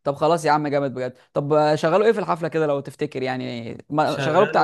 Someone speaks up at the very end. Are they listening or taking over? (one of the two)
taking over